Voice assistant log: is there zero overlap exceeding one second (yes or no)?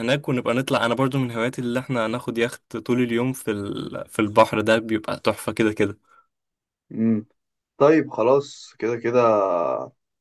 yes